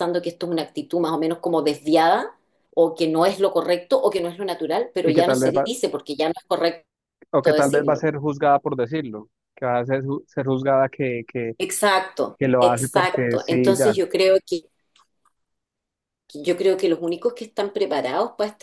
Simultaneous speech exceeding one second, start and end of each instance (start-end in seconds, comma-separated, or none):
12.4-14.0